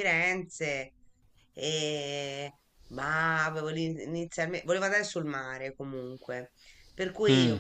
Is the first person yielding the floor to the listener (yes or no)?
no